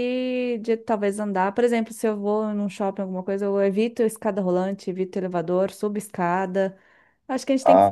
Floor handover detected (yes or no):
no